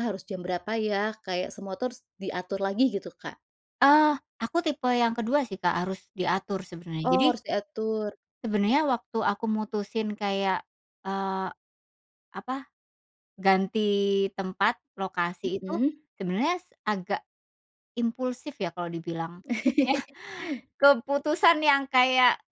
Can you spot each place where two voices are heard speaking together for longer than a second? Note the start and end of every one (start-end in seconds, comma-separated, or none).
none